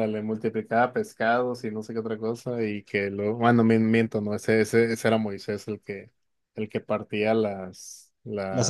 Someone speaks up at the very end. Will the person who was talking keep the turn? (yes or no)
yes